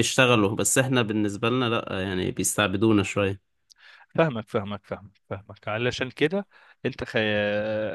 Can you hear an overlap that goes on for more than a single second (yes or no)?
no